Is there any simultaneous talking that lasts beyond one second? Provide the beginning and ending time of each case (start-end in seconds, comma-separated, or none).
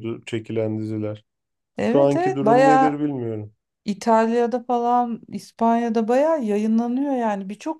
1.8-3.0